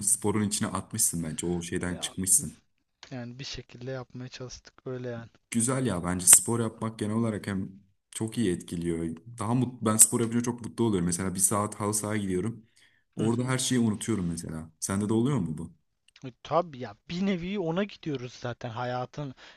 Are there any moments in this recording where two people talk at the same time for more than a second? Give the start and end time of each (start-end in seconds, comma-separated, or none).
none